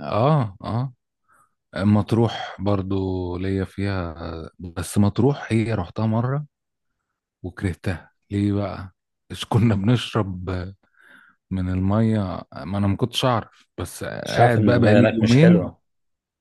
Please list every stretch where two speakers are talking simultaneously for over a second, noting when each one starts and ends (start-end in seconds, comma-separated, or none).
14.2-15.7